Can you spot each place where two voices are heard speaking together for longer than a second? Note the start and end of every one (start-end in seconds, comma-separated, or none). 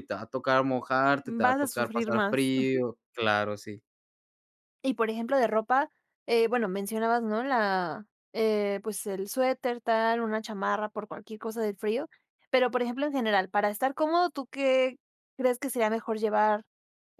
1.2-2.8